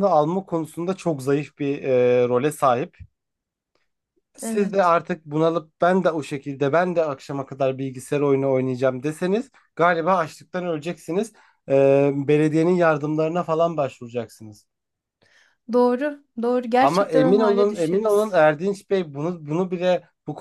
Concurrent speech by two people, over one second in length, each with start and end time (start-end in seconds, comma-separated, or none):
16.8-18.4